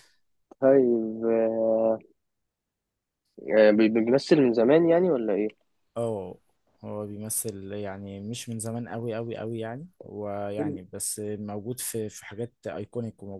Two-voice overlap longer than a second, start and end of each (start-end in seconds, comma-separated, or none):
none